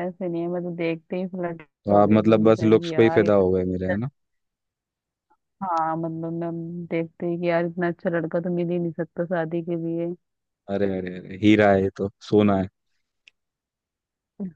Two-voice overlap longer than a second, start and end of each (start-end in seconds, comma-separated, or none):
1.9-3.4